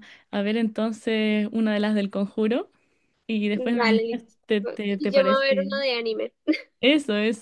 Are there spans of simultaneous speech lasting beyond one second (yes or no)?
yes